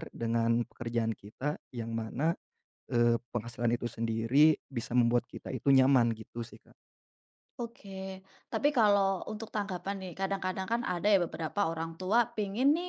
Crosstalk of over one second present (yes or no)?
no